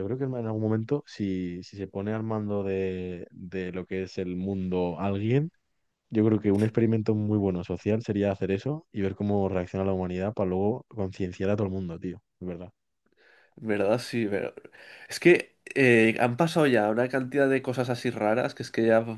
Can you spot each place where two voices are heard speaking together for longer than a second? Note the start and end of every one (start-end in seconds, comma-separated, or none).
none